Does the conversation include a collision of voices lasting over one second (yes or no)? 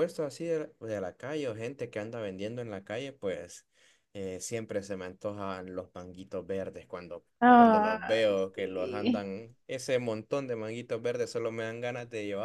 yes